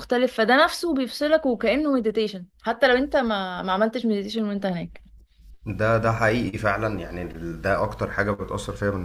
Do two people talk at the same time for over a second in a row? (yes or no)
no